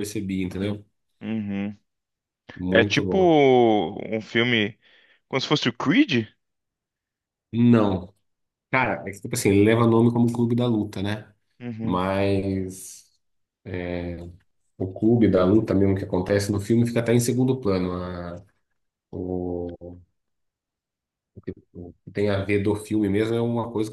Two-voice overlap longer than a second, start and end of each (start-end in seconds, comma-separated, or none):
none